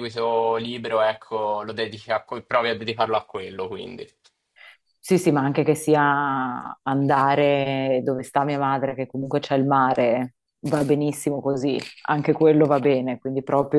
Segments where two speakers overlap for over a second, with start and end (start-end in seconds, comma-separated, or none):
none